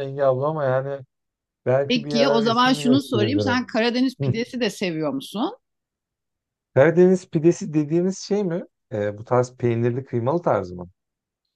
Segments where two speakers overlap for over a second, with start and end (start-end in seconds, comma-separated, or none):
1.9-3.6